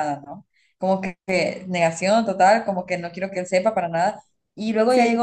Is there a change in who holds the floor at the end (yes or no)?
no